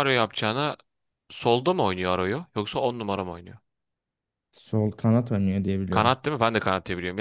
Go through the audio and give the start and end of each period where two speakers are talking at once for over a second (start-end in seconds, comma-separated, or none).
none